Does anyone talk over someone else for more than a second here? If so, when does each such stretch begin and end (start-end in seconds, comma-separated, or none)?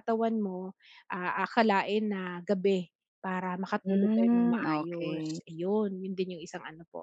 3.8-5.4